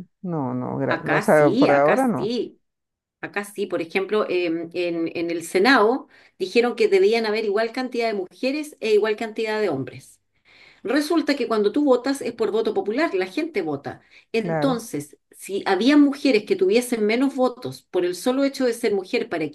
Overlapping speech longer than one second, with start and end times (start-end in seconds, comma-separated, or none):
0.9-2.4